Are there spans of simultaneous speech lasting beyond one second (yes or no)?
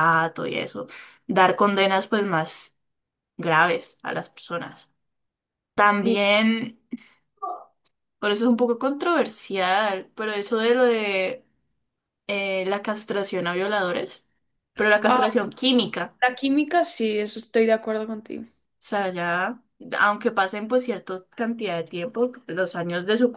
no